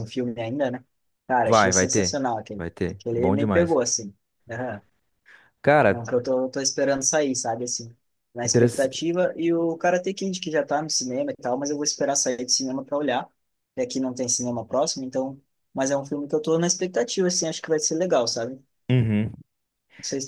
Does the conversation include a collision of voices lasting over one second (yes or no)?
yes